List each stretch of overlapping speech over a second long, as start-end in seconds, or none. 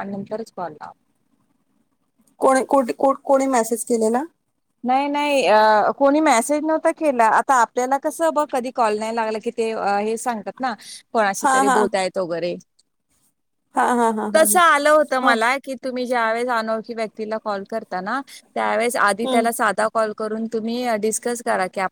none